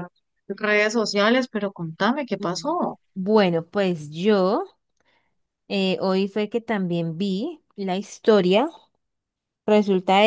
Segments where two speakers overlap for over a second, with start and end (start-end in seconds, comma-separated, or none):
none